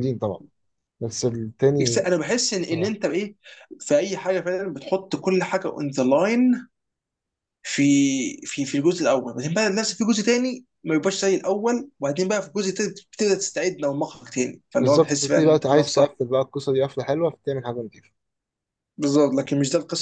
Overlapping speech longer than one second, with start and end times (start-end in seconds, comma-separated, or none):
14.8-16.2